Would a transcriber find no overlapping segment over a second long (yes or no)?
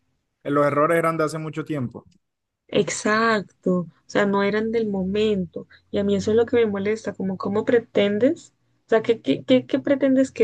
yes